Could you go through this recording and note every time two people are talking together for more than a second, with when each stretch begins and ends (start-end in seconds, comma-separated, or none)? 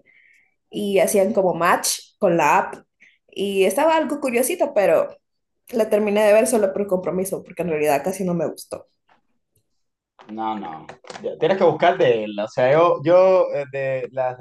none